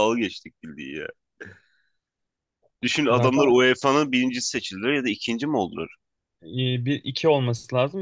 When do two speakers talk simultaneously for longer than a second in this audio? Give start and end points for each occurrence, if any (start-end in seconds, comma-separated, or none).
none